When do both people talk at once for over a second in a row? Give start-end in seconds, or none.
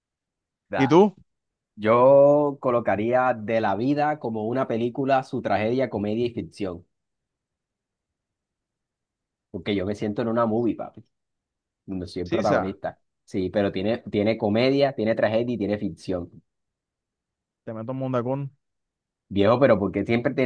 none